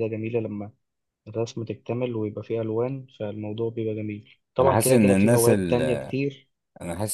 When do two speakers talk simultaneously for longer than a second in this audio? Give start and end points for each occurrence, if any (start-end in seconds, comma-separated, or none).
4.6-6.1